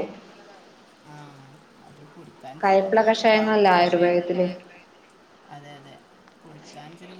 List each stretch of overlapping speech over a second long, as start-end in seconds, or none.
2.6-4.2